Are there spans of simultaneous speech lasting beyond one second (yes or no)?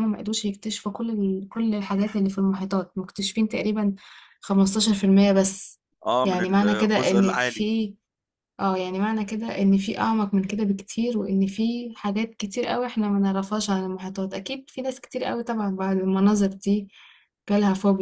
yes